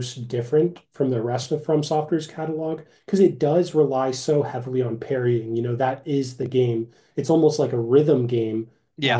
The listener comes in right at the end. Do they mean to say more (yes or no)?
no